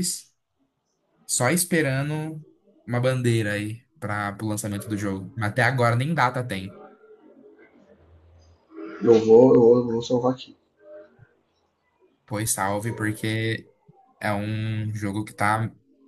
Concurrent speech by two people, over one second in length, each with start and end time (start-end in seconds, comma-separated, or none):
none